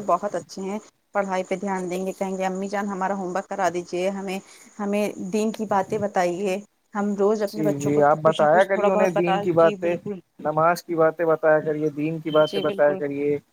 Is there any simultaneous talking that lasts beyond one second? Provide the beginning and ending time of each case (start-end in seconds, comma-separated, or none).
7.5-10.0